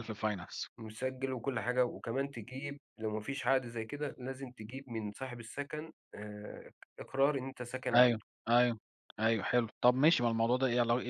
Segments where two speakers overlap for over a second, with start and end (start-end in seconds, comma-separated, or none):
none